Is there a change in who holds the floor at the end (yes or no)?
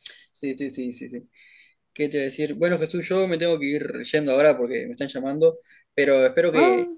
no